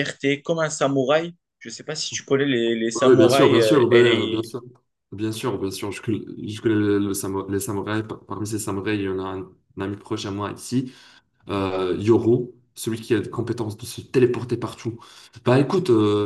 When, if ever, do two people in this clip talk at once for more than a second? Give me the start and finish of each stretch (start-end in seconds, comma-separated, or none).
3.0-4.4